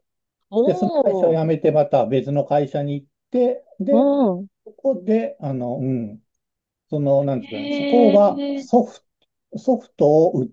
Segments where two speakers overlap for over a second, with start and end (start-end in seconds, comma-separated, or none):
7.4-8.7